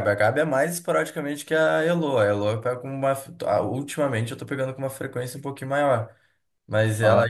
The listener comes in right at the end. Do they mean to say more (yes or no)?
no